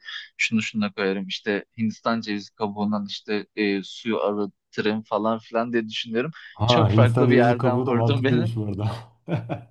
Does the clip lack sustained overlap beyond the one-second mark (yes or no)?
no